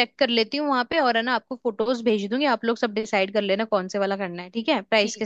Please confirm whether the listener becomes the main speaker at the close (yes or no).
yes